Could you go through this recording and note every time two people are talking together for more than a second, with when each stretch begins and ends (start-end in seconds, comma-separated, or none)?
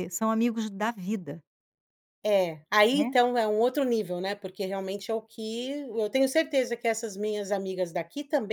none